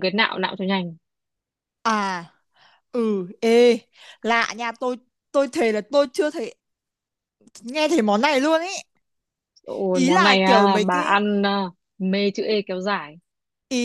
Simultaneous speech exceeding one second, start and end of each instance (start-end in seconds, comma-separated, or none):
9.9-11.2